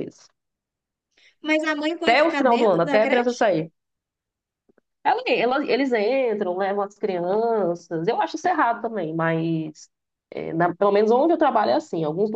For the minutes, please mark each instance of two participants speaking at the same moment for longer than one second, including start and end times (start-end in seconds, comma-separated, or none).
2.0-3.4